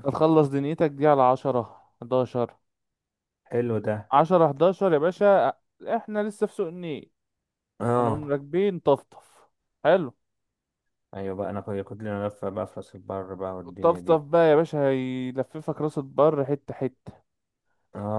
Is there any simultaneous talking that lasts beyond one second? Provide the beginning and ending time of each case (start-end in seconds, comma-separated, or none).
none